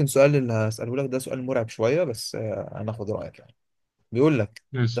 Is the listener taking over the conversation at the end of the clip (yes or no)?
no